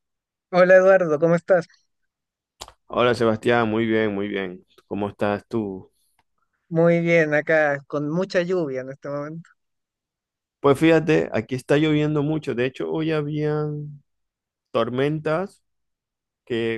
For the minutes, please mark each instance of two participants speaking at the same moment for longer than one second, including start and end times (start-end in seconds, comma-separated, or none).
none